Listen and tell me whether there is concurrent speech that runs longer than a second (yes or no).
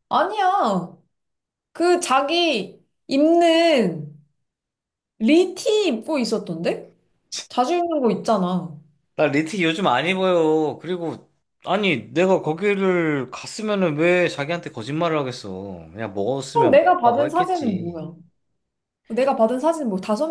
yes